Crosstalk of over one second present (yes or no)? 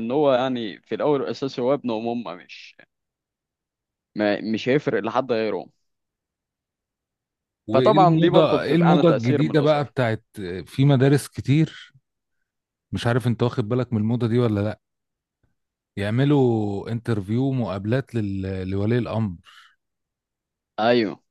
yes